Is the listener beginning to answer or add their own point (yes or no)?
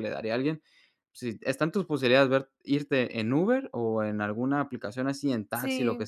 no